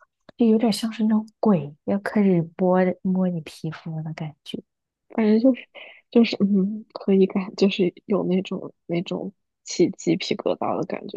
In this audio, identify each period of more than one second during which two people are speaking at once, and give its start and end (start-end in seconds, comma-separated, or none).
none